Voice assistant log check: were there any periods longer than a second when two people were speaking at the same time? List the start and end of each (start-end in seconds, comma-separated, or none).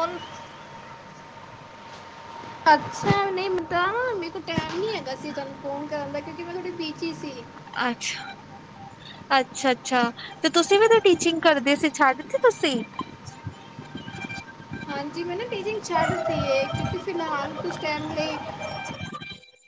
none